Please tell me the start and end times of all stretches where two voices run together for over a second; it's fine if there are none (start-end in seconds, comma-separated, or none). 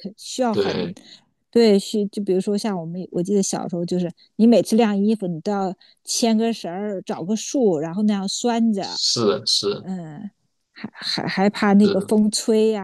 none